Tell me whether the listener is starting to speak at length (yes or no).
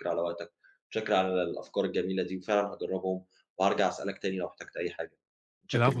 yes